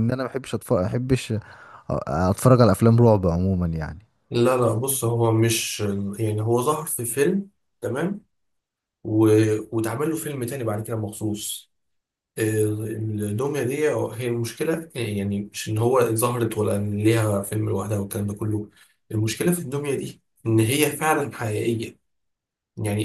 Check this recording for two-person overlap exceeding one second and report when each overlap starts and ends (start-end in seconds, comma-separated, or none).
none